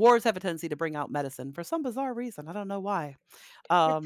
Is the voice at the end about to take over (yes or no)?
yes